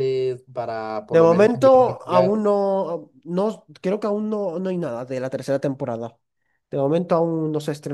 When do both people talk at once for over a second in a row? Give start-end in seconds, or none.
1.1-2.4